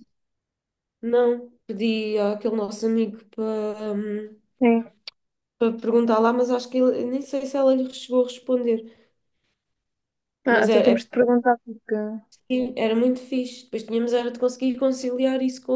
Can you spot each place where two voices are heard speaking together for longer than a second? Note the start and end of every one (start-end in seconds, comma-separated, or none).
none